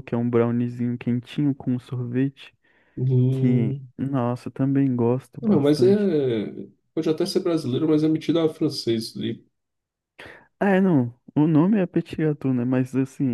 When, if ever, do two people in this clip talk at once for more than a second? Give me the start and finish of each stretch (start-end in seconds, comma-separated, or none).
none